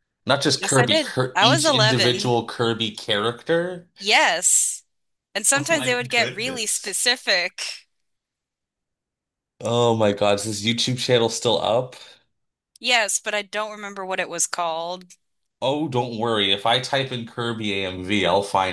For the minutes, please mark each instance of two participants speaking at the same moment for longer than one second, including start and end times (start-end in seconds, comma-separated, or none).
0.6-2.3, 5.5-7.0